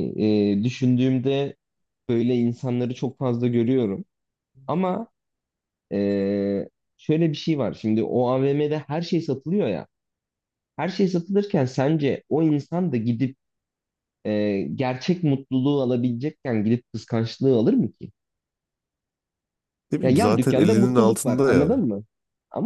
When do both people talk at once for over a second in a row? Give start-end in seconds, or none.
20.0-21.8